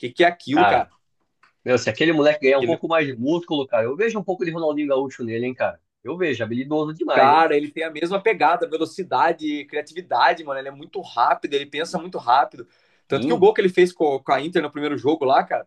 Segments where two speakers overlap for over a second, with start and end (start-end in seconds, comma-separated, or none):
none